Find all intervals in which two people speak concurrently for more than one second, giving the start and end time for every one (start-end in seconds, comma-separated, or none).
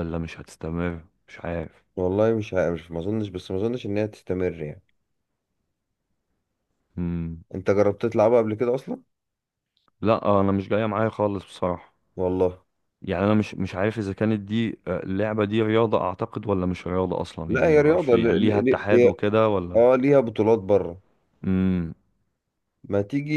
17.5-19.1